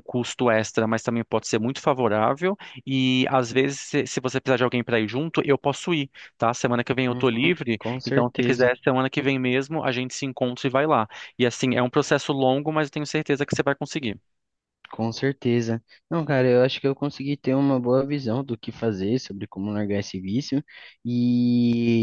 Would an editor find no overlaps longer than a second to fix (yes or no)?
no